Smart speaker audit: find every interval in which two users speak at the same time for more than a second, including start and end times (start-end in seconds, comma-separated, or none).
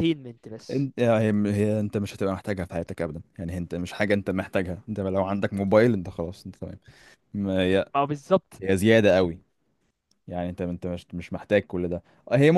none